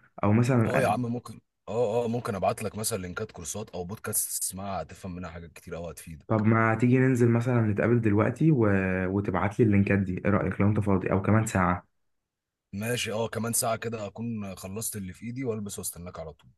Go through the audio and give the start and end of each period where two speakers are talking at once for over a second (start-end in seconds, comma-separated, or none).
none